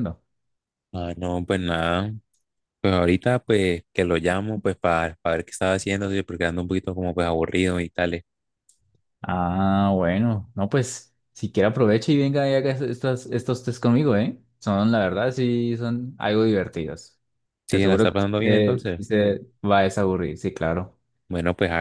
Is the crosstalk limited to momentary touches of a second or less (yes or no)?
no